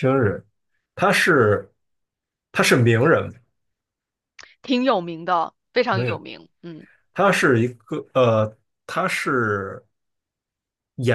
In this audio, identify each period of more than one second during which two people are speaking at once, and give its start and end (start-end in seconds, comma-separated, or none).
none